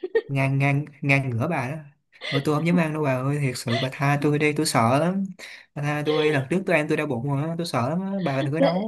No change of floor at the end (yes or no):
no